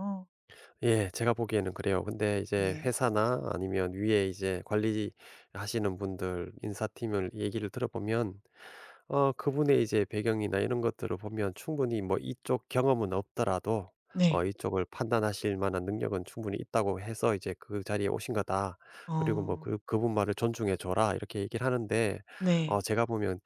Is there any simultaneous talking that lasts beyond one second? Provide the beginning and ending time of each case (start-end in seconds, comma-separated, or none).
none